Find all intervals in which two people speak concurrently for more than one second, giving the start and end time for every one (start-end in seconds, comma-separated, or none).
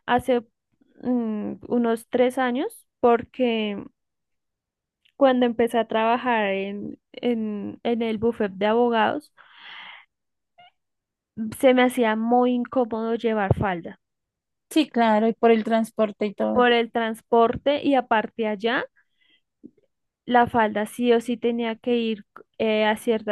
none